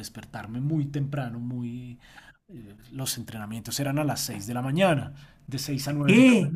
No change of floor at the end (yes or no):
no